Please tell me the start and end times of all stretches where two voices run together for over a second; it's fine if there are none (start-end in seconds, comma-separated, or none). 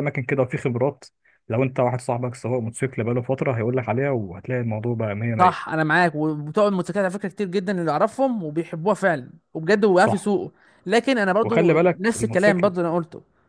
11.4-12.7